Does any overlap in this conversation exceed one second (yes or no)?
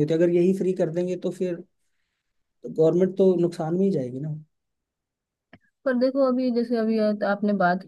no